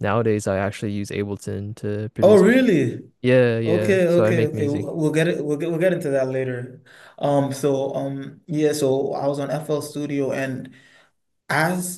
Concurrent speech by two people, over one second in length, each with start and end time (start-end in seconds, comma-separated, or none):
3.6-4.9